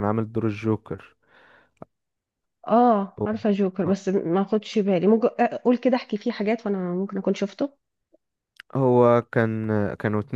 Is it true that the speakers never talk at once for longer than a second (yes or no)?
yes